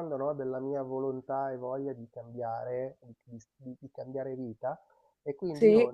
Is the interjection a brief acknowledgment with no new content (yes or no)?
yes